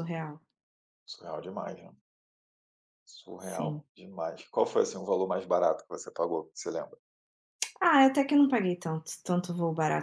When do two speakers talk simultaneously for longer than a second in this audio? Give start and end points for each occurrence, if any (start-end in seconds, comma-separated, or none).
none